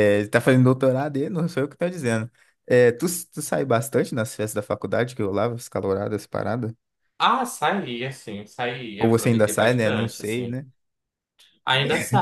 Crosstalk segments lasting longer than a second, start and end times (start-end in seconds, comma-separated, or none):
9.0-10.6